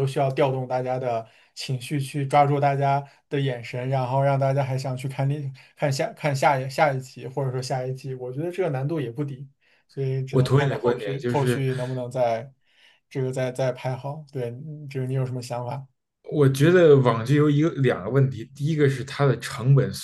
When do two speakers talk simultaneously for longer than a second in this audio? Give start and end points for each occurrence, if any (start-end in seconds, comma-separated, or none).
10.3-11.6